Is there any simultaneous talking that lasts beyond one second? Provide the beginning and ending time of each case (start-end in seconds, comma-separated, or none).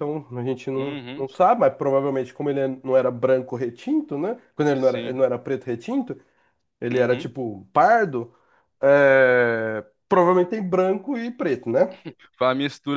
none